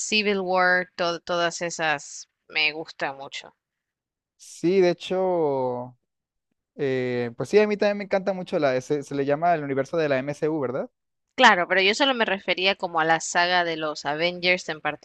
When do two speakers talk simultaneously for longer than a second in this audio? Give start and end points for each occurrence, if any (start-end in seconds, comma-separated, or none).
none